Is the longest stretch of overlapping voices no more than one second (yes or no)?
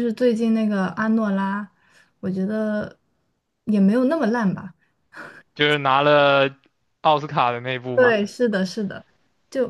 yes